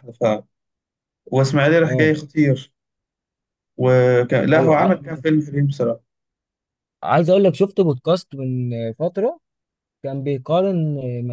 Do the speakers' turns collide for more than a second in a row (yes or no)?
no